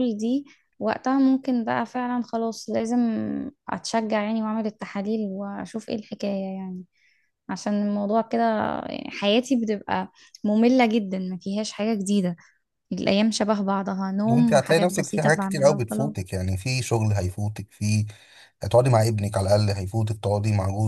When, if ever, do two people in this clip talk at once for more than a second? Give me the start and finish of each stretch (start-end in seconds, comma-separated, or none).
14.3-16.1